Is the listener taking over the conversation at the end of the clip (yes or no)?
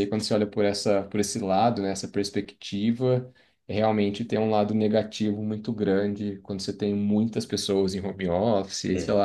no